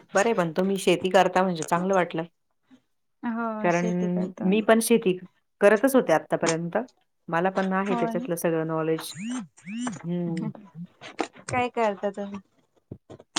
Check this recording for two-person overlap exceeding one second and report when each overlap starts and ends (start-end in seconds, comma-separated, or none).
none